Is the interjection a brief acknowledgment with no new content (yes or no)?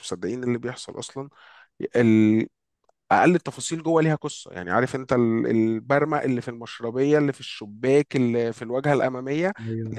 yes